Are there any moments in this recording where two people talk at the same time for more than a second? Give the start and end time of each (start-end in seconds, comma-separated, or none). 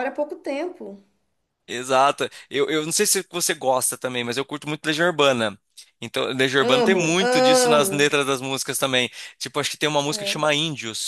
6.7-8.1